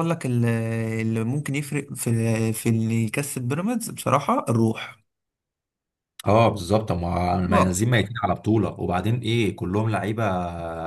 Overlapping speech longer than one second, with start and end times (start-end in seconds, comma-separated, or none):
none